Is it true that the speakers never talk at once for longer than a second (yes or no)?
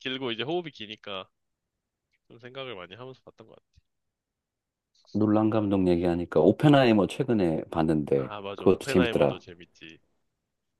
no